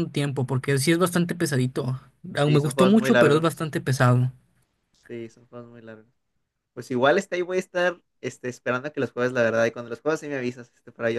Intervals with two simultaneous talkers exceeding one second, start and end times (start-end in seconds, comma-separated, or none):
2.4-3.6